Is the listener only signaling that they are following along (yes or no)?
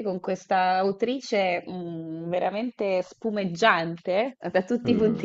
yes